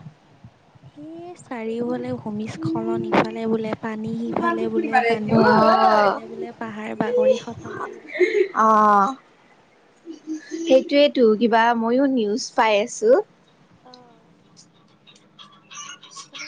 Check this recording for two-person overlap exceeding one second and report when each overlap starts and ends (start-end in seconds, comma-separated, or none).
none